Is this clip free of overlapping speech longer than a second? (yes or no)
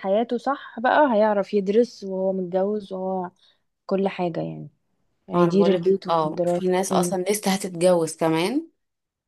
no